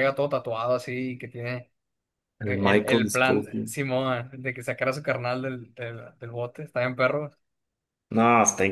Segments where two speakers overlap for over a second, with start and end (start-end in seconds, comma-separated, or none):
2.4-3.7